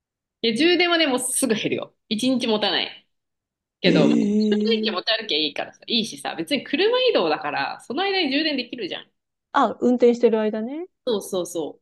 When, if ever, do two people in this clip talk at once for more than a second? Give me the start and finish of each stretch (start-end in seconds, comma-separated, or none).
3.9-5.1